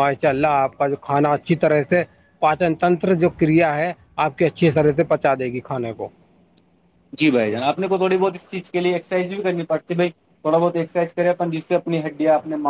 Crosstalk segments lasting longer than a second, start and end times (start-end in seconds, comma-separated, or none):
none